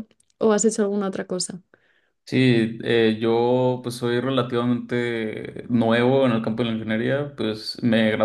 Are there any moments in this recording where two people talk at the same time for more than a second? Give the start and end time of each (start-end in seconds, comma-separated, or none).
none